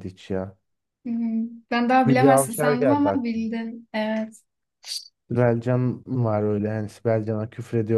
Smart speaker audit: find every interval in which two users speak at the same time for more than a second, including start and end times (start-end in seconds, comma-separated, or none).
2.1-3.5